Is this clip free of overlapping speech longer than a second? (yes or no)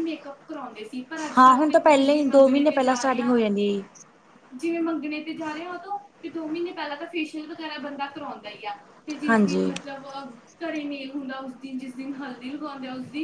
no